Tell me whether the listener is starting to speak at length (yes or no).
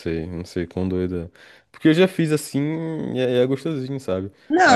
yes